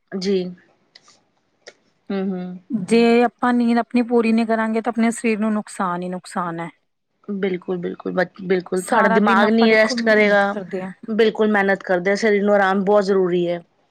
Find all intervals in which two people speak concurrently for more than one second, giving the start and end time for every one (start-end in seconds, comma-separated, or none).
8.9-10.4